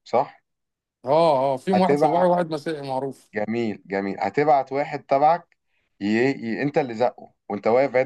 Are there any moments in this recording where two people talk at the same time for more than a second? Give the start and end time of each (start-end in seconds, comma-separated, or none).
none